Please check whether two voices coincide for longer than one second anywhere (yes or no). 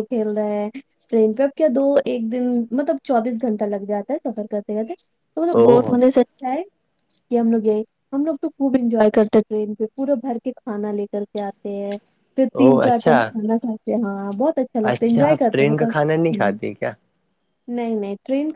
yes